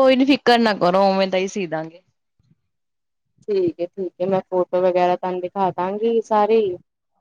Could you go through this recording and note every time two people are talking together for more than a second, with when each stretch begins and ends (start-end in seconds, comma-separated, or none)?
none